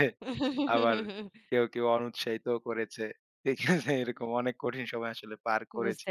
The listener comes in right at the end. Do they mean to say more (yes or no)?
yes